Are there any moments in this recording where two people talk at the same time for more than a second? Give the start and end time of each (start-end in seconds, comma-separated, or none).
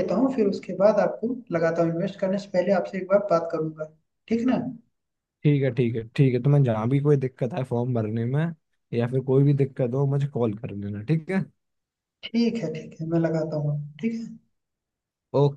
none